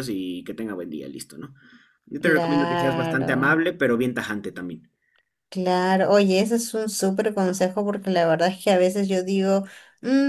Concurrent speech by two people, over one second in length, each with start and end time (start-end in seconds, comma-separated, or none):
2.2-3.6